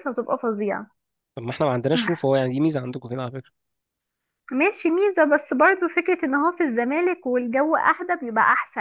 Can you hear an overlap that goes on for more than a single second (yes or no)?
no